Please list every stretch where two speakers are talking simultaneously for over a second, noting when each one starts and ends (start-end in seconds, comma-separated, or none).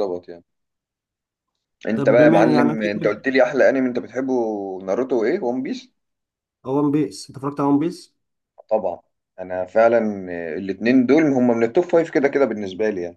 1.9-3.2